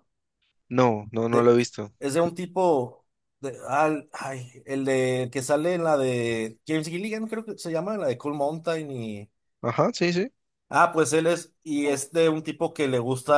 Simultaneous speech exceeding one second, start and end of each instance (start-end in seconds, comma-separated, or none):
none